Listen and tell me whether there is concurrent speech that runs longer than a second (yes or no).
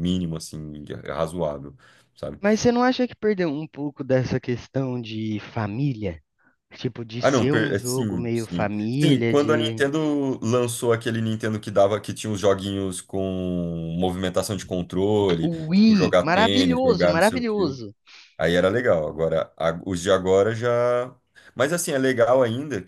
yes